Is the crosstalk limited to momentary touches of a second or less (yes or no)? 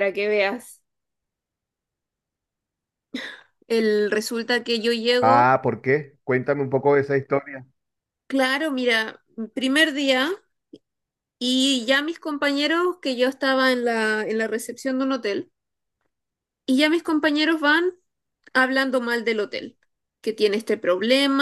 yes